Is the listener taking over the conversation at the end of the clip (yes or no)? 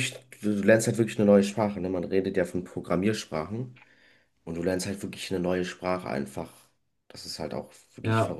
yes